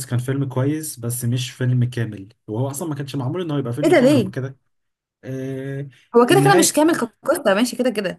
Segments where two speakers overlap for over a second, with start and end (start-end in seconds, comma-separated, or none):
none